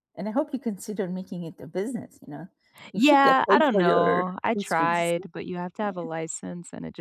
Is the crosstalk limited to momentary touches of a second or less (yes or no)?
no